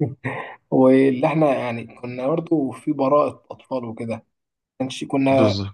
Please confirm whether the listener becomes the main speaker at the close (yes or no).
no